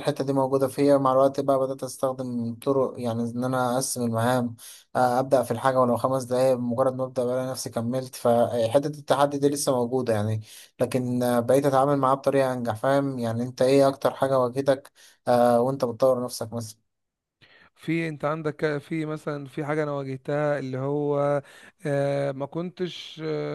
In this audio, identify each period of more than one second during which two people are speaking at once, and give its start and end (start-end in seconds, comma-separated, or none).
none